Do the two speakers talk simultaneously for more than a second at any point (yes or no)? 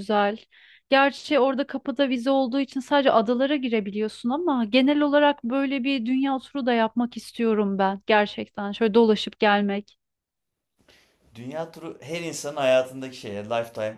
no